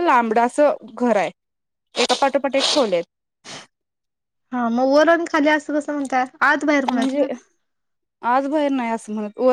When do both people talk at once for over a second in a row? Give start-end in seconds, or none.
none